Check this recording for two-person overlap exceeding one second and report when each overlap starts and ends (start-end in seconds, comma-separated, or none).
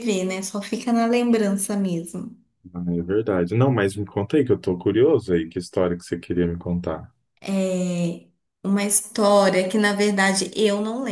none